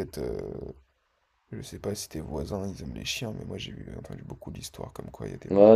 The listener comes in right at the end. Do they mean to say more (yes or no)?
yes